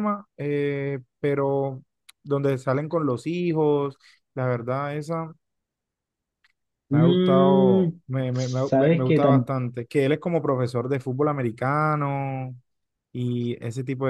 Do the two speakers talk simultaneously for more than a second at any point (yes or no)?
yes